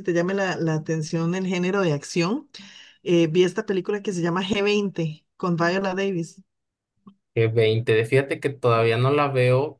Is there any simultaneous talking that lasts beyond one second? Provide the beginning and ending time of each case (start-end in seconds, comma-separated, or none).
none